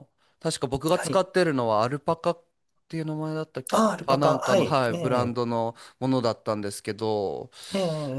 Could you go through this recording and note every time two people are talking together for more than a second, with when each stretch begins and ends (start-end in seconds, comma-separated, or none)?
3.7-5.4